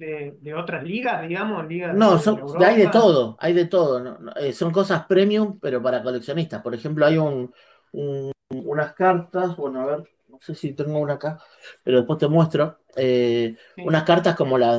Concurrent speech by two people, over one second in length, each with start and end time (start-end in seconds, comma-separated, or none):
1.9-3.1